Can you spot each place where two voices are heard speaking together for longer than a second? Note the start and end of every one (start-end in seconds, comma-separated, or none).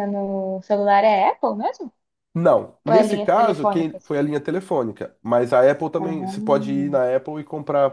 2.9-4.1